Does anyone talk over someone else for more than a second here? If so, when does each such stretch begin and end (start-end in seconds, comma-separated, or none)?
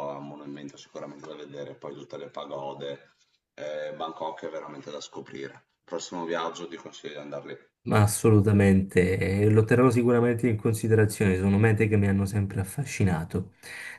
none